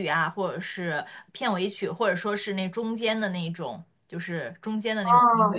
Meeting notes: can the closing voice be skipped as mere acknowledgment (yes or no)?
no